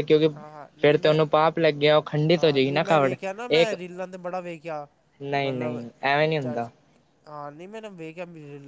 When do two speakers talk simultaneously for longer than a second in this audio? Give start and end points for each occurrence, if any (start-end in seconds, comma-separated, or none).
none